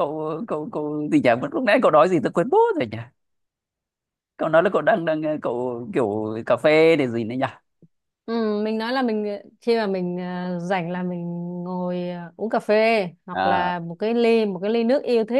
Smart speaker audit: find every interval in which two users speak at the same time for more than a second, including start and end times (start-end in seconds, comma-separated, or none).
none